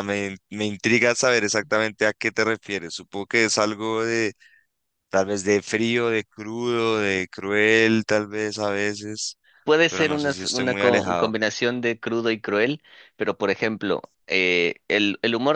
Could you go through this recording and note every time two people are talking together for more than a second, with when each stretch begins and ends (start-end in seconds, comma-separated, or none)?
9.9-11.3